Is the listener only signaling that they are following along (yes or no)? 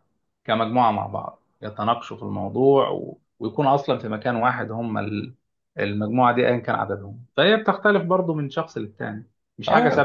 no